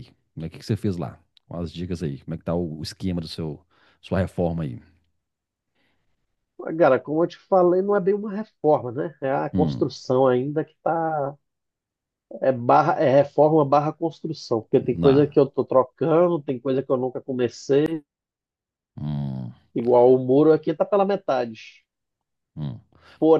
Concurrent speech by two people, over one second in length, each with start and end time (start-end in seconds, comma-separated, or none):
none